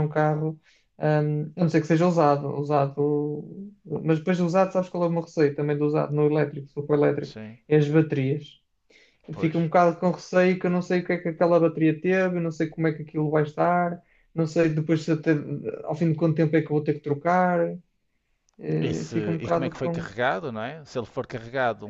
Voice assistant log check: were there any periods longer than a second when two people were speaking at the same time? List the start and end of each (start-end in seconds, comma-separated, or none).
18.8-20.1